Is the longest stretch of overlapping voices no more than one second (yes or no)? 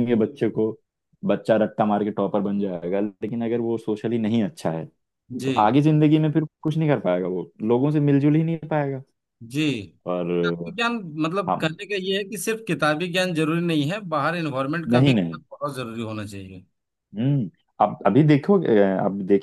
yes